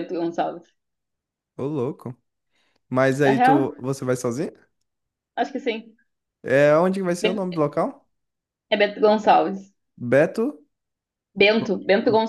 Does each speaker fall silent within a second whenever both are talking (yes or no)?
yes